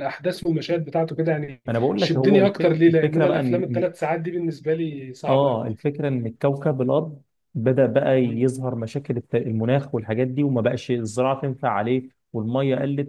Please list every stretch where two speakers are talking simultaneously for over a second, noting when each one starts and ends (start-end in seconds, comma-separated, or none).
1.7-3.9